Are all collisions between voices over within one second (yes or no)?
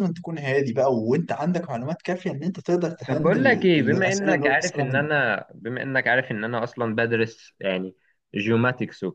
no